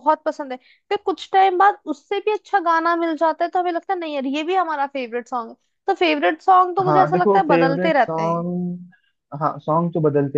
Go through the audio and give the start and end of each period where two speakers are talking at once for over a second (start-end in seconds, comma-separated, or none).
6.9-8.4